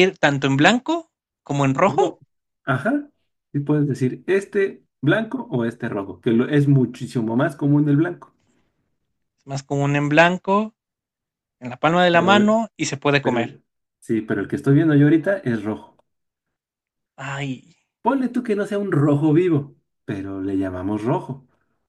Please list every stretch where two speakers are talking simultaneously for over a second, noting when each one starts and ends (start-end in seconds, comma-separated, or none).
none